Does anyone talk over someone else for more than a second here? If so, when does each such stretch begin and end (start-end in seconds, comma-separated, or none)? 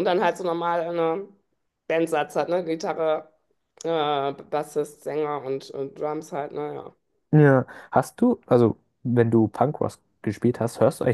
none